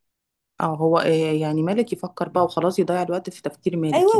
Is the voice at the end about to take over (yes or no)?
yes